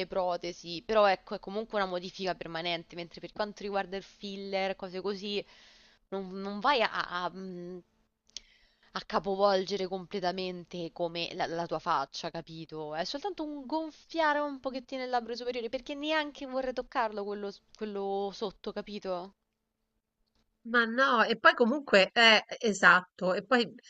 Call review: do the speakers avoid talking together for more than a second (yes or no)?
yes